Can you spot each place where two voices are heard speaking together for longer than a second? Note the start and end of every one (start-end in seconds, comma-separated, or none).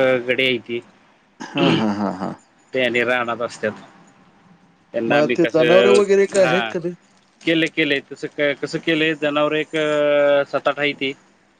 5.1-6.6